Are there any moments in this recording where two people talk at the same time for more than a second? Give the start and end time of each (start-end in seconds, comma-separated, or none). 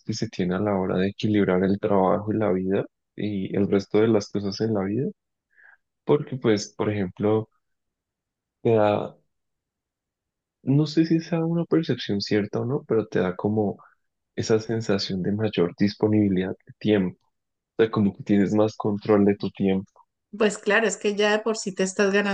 none